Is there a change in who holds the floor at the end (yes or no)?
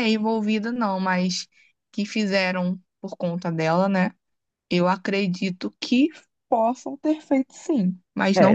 yes